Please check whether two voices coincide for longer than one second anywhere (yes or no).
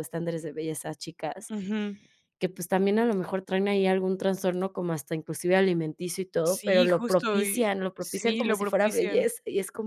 yes